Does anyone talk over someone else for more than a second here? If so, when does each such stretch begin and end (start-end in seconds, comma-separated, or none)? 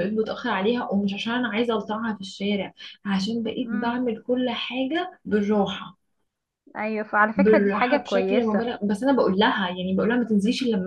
7.3-8.7